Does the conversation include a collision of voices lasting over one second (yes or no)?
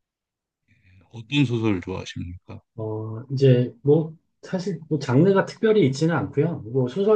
no